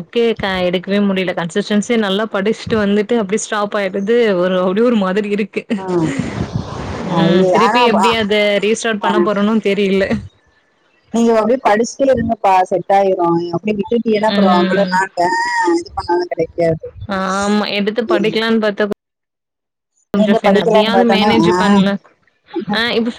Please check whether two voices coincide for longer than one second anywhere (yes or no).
yes